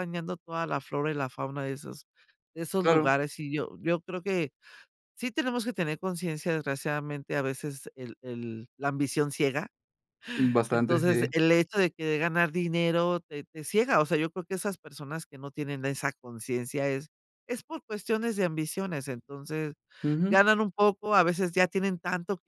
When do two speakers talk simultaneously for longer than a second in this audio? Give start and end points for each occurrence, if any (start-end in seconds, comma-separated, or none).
none